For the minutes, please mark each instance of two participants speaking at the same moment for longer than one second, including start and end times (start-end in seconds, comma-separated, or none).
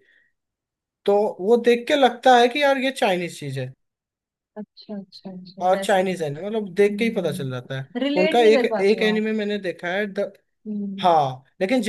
6.7-9.2